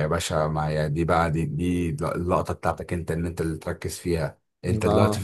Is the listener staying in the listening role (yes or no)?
yes